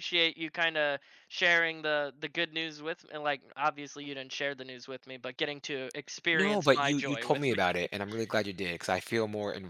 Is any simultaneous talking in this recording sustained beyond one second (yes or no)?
yes